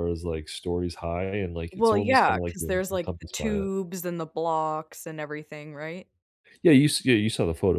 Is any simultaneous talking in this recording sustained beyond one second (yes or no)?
yes